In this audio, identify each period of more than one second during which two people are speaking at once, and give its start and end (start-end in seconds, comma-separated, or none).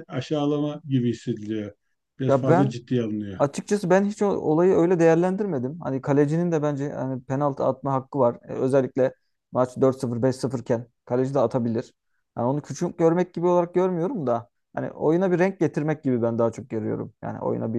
none